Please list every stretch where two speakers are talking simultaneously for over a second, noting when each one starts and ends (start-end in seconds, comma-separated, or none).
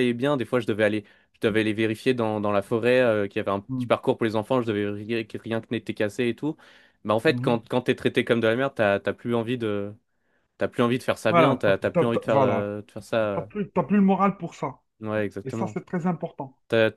11.3-12.7